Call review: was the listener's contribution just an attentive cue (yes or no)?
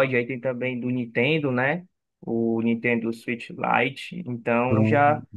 yes